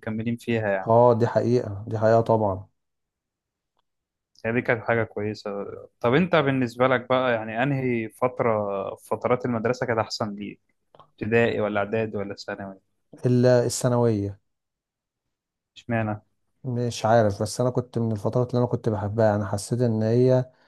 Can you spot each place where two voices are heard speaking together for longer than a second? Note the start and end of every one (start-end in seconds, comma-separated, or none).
none